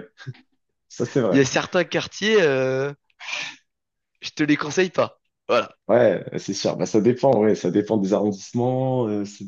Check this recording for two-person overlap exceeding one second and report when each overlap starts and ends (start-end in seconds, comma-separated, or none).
none